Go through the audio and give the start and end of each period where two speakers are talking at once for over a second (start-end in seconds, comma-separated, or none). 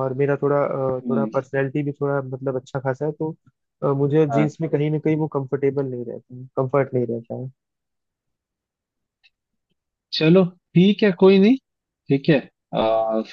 none